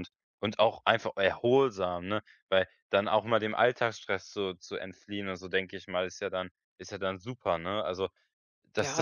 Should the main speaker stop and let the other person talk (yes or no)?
yes